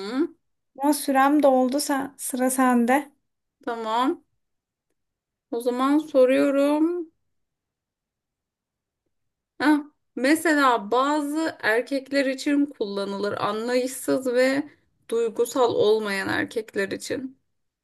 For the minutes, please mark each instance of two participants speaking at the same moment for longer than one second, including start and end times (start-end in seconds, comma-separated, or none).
none